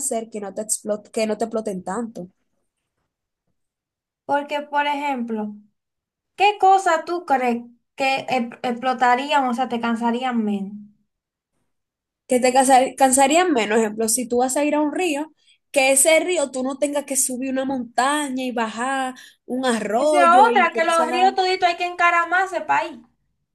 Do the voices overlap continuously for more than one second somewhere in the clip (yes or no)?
yes